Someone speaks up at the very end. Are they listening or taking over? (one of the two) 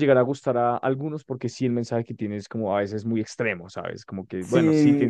taking over